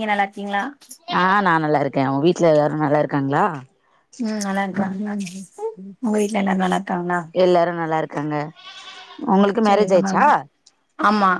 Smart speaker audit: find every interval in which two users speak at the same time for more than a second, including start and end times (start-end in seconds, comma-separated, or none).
none